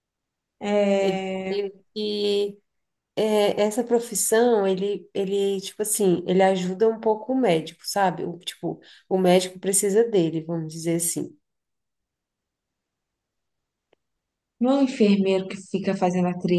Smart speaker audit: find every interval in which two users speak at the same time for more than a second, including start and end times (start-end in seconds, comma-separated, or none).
none